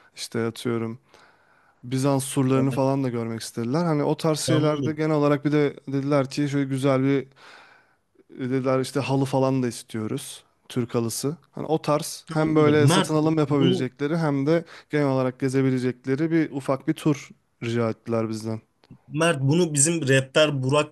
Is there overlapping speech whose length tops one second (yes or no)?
yes